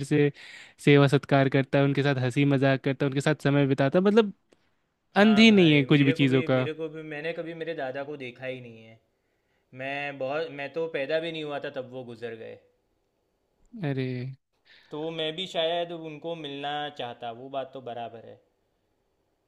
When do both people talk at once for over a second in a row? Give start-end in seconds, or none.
5.2-6.7